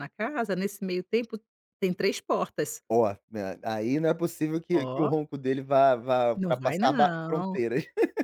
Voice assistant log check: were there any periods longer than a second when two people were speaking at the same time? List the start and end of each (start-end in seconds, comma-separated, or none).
6.3-7.6